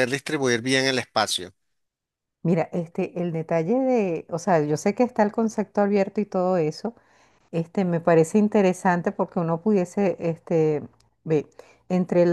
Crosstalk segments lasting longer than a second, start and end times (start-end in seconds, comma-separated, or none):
none